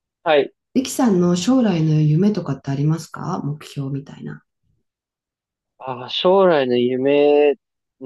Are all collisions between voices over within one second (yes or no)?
yes